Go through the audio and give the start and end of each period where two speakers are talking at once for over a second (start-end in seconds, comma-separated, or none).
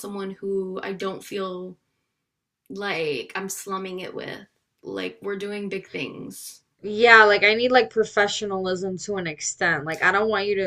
none